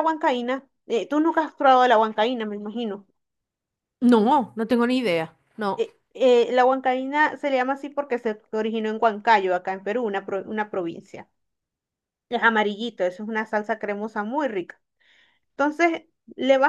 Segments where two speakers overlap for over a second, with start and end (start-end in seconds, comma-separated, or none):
none